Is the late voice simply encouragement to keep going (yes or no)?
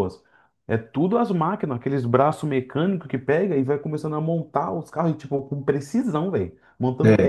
yes